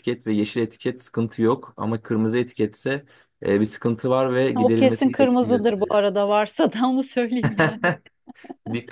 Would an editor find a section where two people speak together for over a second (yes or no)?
yes